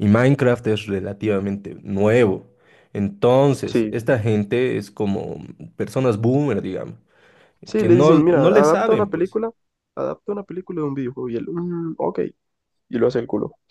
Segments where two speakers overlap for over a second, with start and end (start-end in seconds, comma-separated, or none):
7.8-9.4